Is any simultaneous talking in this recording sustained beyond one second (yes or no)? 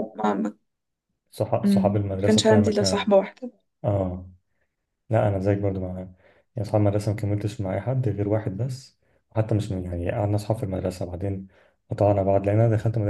yes